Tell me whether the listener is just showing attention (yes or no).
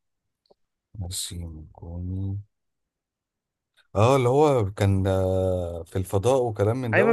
no